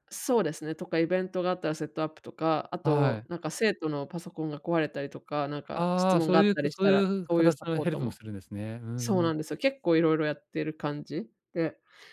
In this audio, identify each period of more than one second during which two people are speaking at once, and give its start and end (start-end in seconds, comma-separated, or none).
5.7-8.2